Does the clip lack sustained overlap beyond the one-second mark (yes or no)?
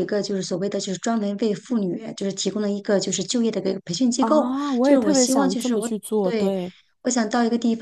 no